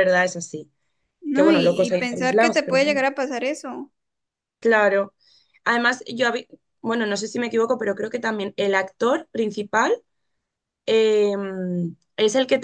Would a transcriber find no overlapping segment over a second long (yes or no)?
no